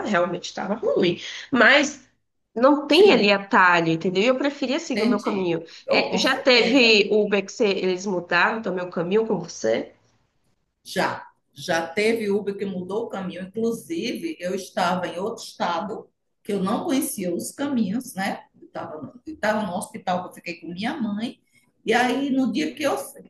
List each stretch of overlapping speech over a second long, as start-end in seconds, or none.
4.9-7.0